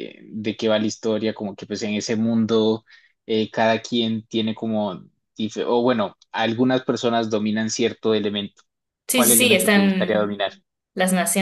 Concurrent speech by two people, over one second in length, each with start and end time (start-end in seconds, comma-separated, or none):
9.1-10.5